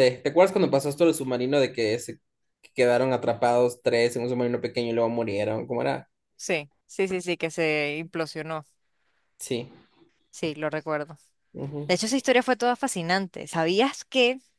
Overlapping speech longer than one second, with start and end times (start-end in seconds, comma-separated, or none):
none